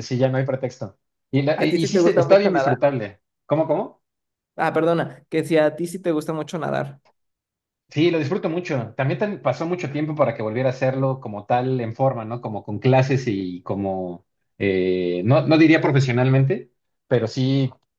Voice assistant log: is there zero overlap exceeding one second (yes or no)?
no